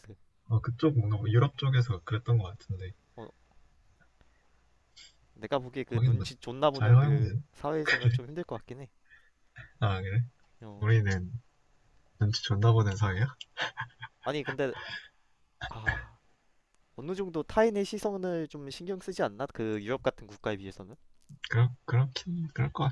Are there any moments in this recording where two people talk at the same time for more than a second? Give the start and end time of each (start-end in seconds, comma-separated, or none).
5.9-7.4